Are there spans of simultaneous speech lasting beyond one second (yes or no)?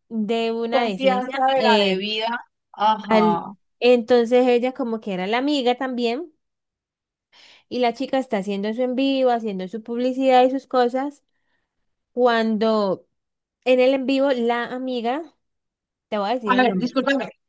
yes